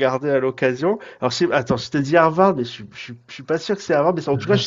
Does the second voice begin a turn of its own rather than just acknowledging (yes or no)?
no